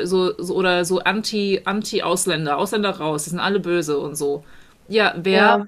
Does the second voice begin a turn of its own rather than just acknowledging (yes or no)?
no